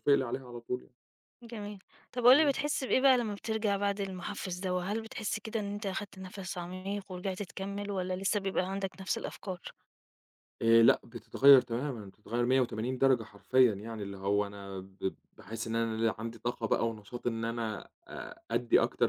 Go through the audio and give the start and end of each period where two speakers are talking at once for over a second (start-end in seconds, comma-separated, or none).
none